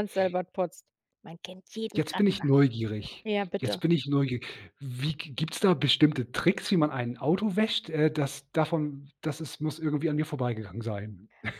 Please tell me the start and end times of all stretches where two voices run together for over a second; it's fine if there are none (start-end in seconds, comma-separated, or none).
none